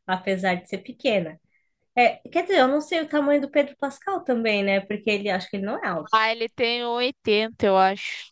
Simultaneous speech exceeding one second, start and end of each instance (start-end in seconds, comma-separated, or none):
none